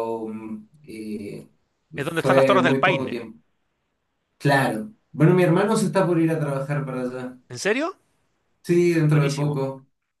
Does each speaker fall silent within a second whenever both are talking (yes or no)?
no